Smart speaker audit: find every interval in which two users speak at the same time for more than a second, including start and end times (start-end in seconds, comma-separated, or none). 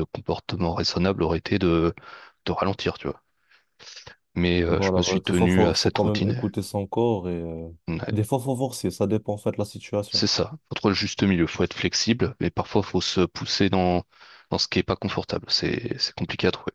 4.7-6.5